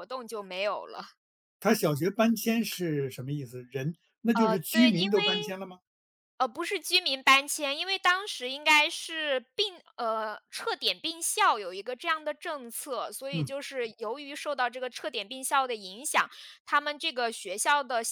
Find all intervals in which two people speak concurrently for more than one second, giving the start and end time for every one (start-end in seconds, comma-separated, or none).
4.3-5.6